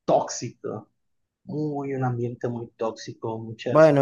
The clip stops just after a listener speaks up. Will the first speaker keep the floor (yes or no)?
no